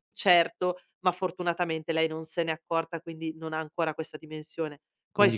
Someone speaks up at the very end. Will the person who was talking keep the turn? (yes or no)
yes